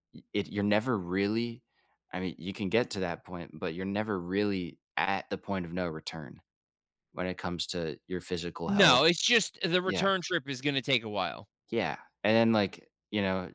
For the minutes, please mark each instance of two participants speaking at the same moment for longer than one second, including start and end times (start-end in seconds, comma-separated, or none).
none